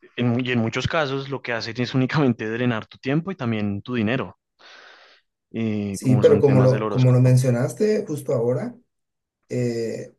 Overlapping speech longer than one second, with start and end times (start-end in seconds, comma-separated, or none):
5.9-7.4